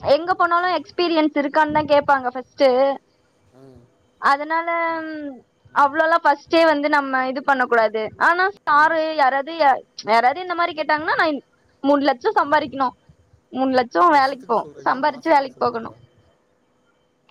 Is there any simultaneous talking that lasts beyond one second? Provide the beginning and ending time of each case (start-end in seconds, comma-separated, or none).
14.1-15.9